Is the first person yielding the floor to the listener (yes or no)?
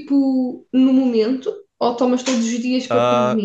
yes